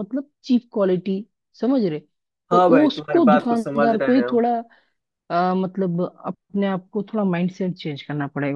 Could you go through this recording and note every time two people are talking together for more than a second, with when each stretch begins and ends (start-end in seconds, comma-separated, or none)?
2.5-4.4